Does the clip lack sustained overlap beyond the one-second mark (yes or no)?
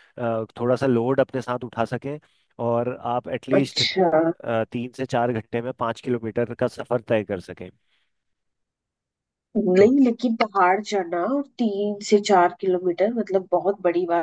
yes